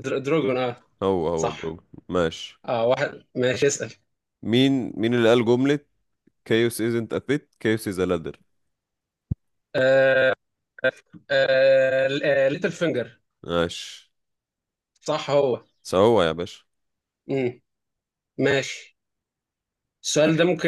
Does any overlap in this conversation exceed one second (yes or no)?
no